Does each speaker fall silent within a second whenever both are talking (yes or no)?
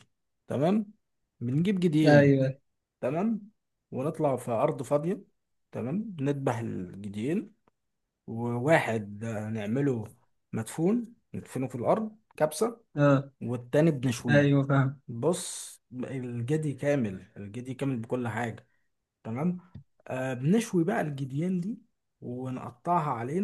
yes